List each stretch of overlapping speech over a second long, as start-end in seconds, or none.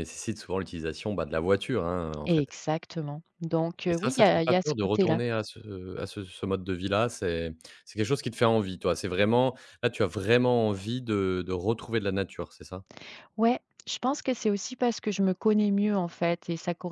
3.9-5.2